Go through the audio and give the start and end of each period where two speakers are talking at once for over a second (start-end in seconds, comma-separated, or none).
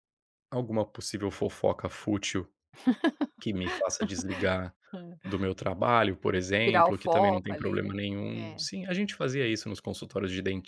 6.6-8.7